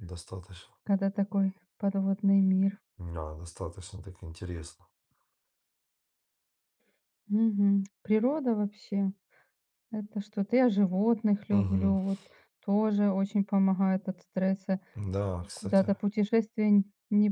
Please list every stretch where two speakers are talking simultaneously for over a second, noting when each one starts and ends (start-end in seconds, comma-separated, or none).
none